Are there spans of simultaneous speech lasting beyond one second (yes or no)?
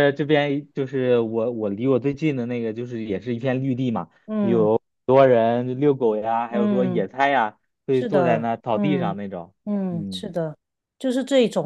yes